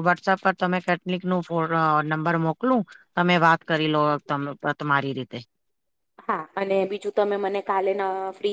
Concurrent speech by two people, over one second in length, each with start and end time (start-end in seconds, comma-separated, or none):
none